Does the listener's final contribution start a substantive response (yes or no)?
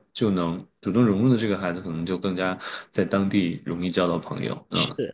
no